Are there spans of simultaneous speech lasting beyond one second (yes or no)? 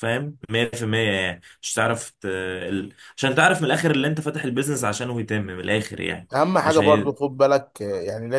no